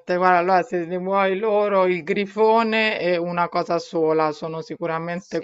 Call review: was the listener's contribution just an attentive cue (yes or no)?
yes